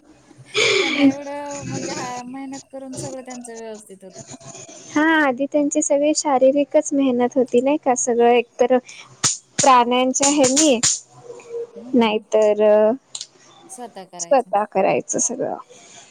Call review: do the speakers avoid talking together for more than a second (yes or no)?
yes